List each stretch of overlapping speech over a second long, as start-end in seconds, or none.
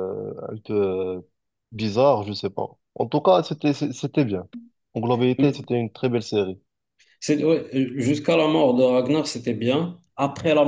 none